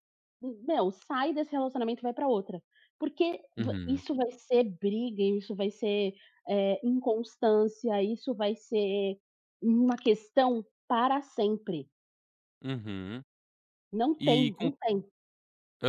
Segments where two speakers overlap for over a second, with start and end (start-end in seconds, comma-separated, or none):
none